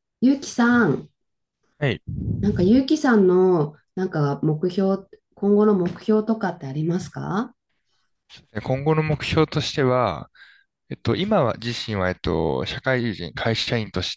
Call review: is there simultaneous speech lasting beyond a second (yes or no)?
no